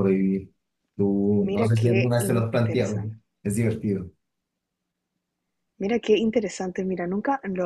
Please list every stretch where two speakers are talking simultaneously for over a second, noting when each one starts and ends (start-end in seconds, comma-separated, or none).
1.4-3.1